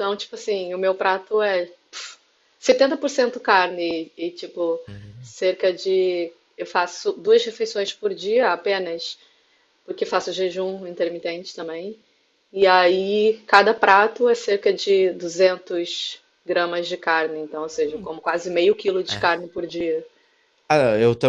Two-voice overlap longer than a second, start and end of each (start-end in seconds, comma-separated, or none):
none